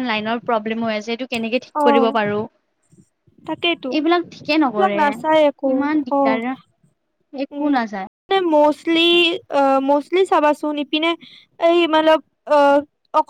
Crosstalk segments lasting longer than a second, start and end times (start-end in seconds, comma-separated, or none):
none